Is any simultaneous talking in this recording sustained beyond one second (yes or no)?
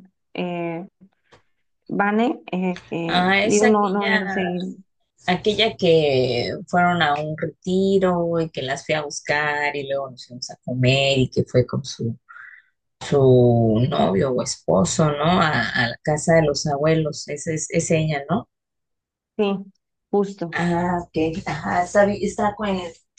yes